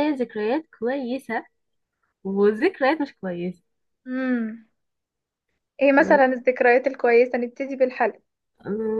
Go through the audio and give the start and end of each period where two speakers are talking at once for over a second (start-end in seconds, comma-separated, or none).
none